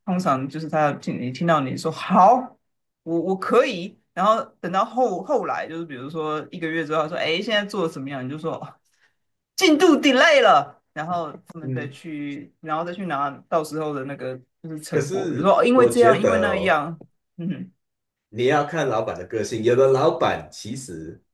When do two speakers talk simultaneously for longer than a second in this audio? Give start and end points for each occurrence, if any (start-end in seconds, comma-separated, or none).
14.9-16.8